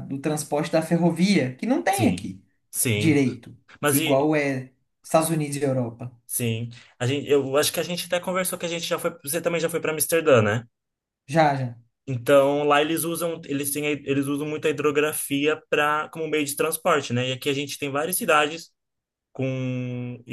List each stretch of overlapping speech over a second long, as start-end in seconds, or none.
none